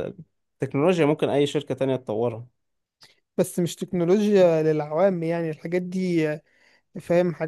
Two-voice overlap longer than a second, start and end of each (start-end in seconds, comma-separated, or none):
none